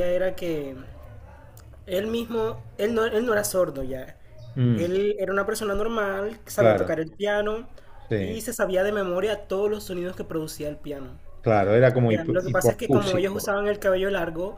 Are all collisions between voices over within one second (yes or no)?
no